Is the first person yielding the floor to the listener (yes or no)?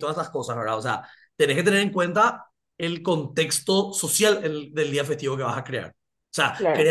no